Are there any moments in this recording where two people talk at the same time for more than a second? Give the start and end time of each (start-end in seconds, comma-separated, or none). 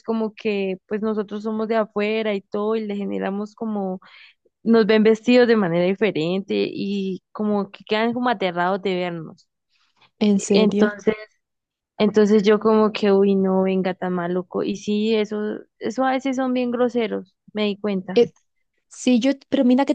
none